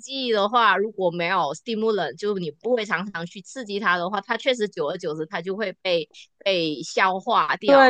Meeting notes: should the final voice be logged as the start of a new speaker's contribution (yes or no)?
yes